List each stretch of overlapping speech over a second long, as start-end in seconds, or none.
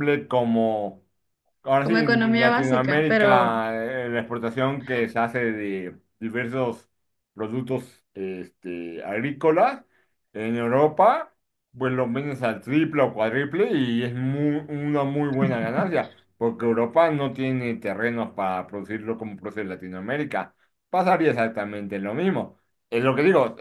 1.8-3.5